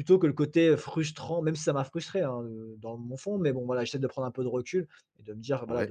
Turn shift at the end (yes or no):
no